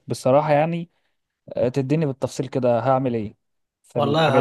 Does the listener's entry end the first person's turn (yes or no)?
yes